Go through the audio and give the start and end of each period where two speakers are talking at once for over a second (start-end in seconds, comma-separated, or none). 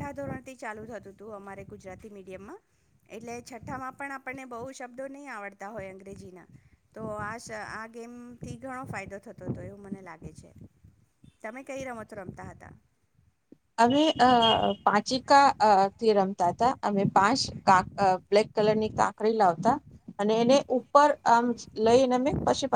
none